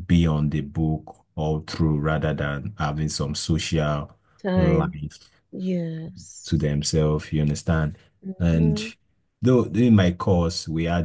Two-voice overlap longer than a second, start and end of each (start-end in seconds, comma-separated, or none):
none